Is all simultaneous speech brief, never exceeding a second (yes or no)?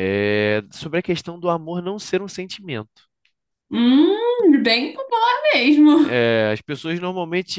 yes